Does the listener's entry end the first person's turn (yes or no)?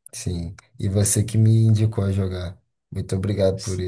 yes